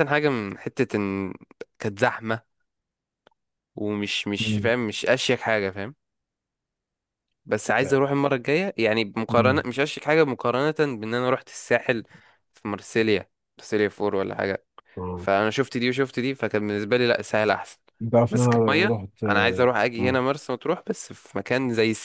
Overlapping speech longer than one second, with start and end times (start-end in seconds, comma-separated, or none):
18.3-20.2